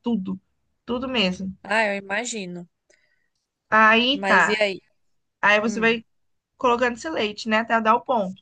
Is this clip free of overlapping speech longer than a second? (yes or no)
yes